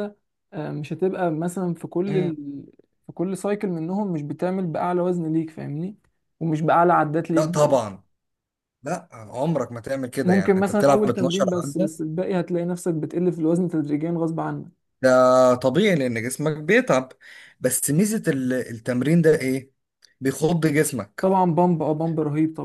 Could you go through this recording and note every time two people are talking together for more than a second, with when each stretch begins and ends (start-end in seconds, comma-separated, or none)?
10.2-11.9